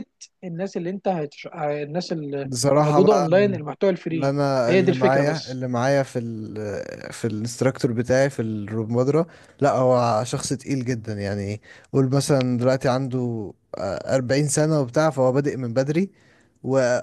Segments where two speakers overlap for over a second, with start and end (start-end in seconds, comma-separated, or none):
4.1-5.6